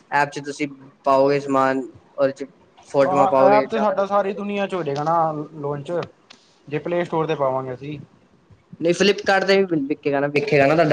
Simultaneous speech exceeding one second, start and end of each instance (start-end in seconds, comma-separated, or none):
3.0-4.4